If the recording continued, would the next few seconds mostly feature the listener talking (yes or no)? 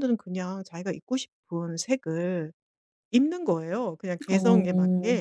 no